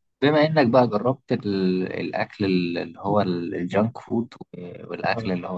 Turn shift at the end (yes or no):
no